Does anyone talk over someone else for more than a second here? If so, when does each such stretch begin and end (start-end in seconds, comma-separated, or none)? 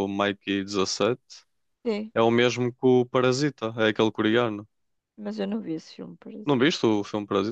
none